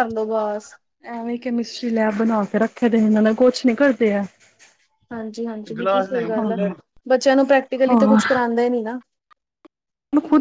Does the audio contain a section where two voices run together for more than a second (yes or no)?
no